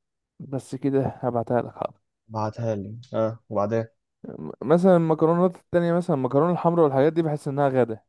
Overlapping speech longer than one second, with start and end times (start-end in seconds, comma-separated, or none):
none